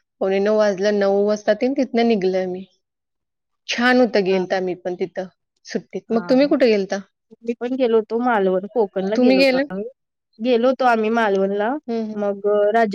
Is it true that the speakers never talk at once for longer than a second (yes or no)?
yes